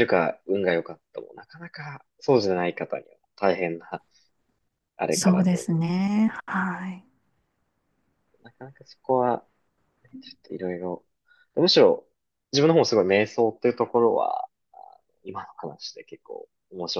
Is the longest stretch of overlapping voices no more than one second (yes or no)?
yes